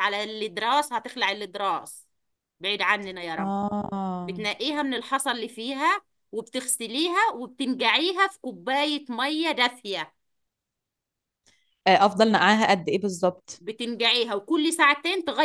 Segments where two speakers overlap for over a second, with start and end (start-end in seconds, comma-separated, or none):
none